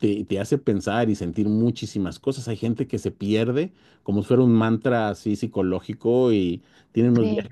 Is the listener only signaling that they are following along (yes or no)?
yes